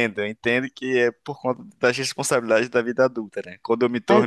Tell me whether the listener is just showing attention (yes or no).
yes